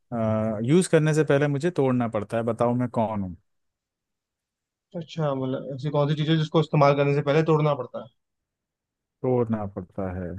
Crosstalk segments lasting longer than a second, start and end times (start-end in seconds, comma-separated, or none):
none